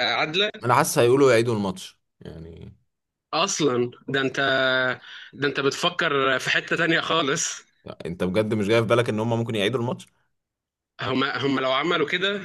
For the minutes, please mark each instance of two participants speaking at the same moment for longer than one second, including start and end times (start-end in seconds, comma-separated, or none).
none